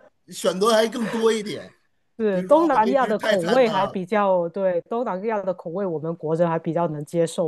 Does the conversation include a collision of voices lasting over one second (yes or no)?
yes